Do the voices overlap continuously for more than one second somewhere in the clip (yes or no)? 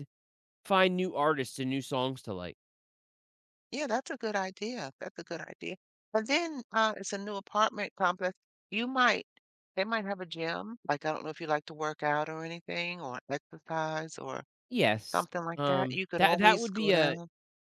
yes